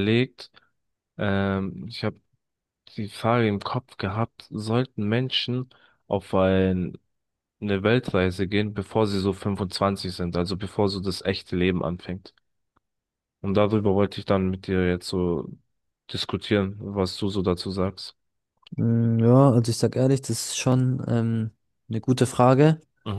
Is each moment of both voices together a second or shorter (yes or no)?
yes